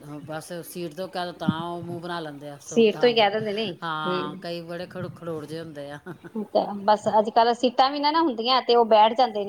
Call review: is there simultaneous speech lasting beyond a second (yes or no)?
no